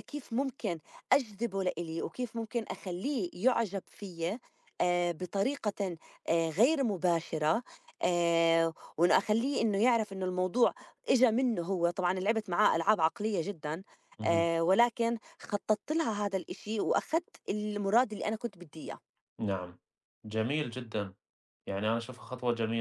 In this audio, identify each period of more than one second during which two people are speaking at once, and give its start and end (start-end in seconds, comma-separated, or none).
none